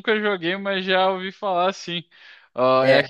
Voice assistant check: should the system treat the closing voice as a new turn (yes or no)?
no